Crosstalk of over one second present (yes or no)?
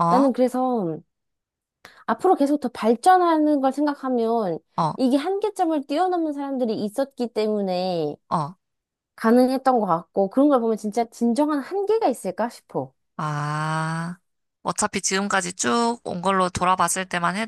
no